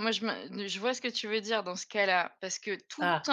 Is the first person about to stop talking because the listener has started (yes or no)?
no